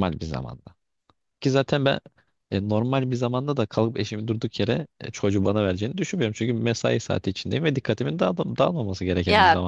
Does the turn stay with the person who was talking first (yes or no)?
no